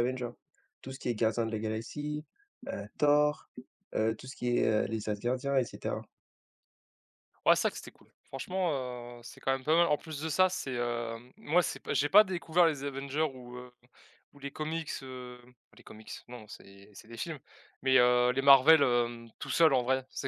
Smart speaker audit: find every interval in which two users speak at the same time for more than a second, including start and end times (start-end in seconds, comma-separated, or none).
none